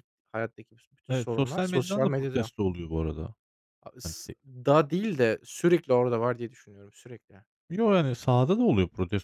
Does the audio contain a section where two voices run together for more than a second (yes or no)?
yes